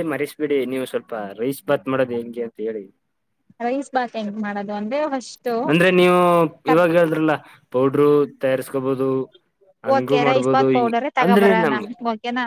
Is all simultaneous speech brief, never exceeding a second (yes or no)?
no